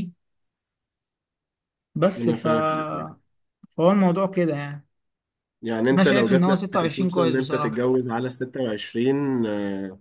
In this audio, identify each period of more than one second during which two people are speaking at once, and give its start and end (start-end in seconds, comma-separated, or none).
5.9-7.9